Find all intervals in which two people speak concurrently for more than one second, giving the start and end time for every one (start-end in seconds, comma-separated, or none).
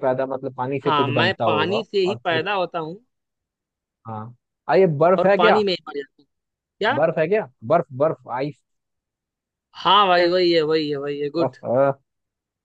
0.8-2.5